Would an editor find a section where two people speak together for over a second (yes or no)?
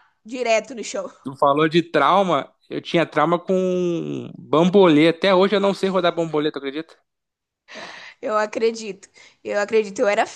no